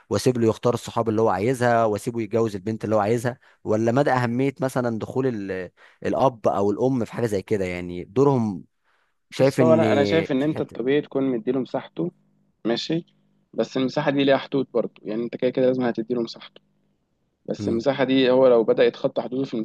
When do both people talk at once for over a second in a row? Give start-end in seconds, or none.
none